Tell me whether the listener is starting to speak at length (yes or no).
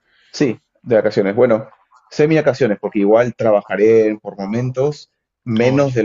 no